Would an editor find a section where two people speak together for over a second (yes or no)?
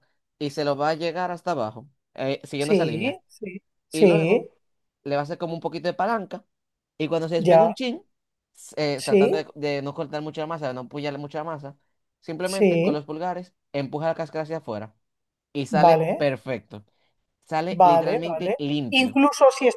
yes